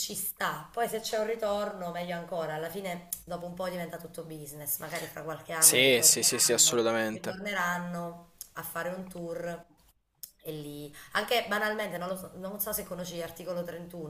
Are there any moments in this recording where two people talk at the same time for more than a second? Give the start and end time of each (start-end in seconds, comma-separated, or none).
5.5-7.4